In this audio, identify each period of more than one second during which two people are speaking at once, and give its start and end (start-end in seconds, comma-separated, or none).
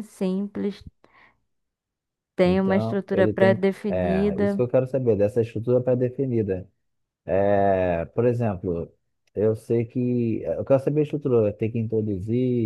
2.4-4.6